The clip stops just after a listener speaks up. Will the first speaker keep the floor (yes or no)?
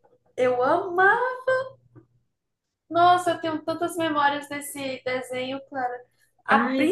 yes